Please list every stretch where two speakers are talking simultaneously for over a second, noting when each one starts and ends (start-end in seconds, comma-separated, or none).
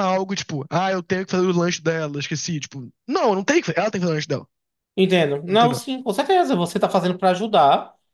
none